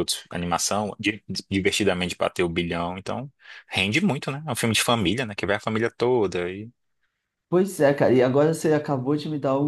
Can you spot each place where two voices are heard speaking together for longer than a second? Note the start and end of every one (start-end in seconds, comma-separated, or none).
none